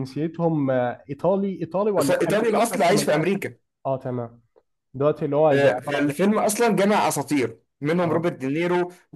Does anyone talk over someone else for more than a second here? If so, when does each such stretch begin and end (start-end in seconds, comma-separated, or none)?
2.0-3.4